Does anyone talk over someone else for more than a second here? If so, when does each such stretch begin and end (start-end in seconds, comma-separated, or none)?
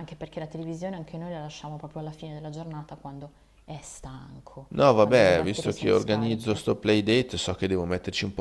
4.7-6.7